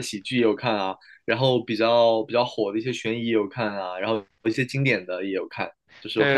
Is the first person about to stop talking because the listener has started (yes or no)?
yes